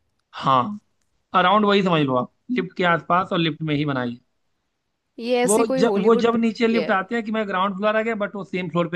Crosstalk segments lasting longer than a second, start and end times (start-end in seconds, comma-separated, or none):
5.5-6.9